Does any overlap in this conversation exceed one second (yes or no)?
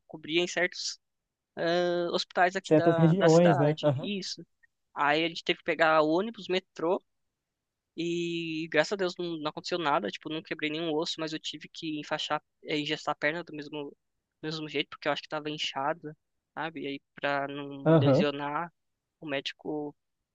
yes